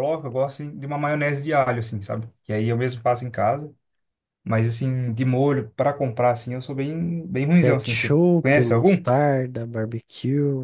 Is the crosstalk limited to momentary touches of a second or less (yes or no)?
no